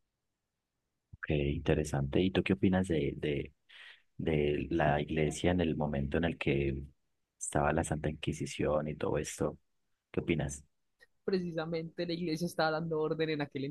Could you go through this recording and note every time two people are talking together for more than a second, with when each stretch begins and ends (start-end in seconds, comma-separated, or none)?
none